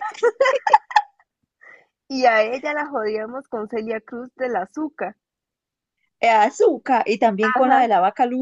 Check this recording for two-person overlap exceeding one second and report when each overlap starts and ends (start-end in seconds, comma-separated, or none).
none